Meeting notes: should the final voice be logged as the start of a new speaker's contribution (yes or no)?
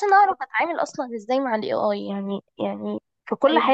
no